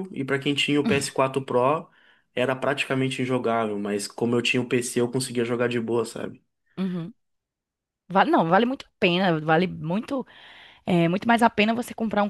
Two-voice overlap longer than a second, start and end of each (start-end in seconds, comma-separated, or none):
none